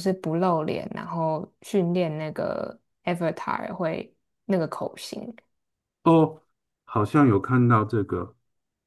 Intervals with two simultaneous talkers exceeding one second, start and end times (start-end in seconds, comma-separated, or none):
none